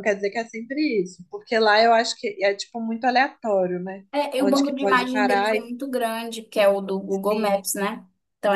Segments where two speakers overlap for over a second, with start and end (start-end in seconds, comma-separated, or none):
4.1-5.7